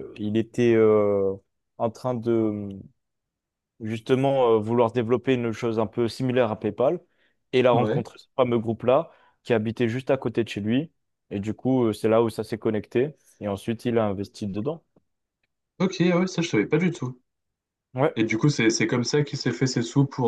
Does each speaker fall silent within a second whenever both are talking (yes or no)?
yes